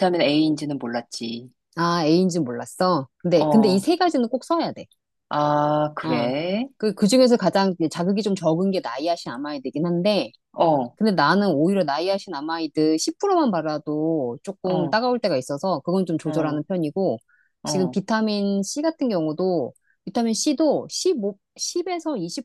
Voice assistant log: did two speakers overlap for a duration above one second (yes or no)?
no